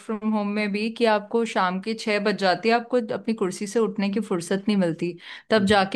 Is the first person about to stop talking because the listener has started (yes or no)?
no